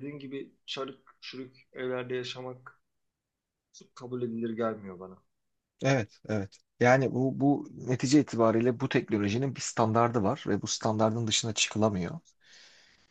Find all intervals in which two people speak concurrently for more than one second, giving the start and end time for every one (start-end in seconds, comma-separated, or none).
none